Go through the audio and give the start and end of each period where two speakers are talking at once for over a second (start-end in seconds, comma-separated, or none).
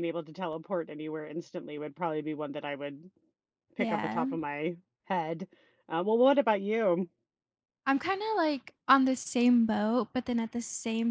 none